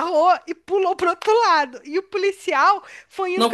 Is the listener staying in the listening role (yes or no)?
yes